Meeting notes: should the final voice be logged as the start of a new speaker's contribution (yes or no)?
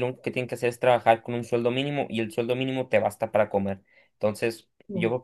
no